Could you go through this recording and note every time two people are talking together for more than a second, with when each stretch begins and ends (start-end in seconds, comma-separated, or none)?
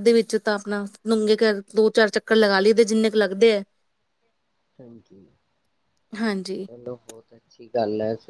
none